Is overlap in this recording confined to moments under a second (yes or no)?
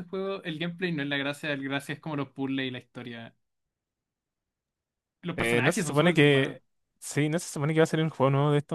no